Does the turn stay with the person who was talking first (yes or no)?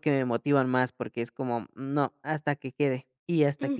yes